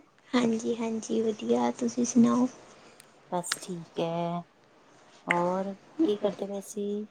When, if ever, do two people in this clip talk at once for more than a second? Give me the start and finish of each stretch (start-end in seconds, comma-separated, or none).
none